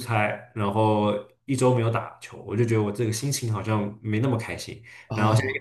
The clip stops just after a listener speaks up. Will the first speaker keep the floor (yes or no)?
yes